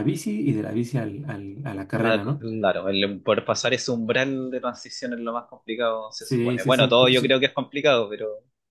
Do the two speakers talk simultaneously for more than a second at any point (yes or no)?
yes